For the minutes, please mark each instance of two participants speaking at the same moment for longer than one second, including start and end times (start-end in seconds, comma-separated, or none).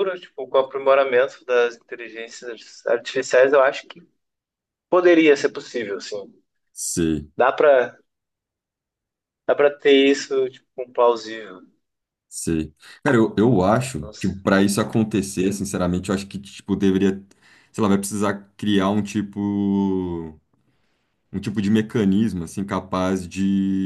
none